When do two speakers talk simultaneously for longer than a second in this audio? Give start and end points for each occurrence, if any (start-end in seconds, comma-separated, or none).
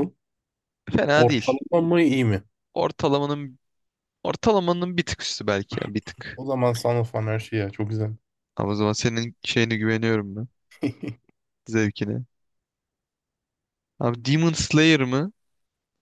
none